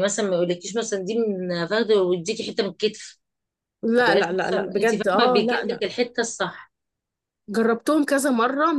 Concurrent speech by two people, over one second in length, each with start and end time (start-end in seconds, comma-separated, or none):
4.1-5.8